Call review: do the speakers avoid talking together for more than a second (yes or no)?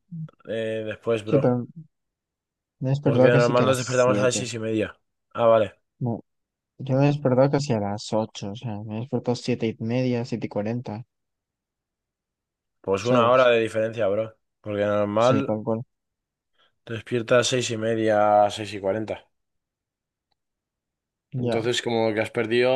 no